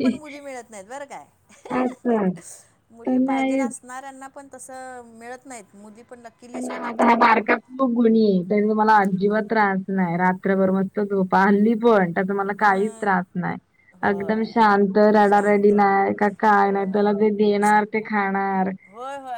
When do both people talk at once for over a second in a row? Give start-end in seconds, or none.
none